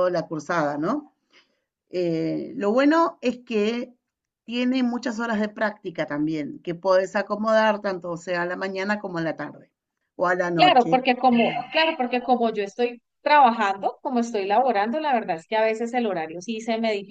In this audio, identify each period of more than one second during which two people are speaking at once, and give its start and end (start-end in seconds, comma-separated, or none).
none